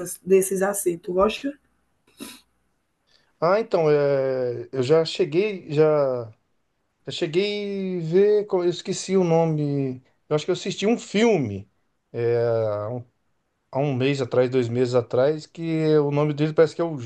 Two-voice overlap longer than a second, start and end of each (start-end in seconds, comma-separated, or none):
none